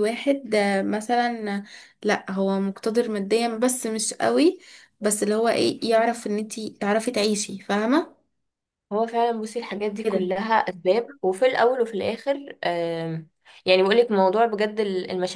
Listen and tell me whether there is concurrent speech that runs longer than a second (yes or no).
no